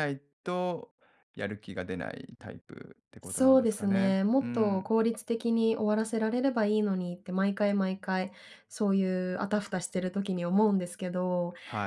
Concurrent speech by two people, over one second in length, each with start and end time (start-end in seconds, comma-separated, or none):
3.2-4.9